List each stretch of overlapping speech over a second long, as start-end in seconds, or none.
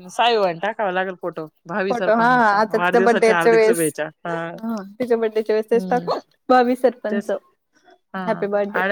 1.9-3.8